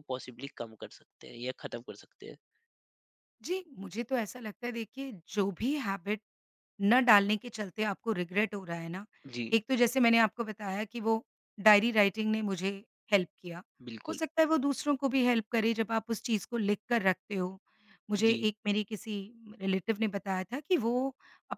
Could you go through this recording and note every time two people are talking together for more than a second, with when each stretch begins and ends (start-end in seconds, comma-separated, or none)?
none